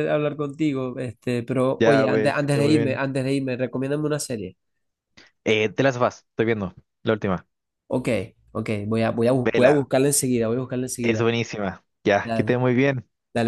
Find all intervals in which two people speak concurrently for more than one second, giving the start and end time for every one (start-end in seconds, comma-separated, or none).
1.8-3.0